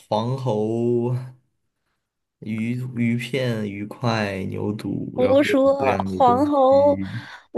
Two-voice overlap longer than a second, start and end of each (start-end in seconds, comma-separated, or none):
5.2-7.0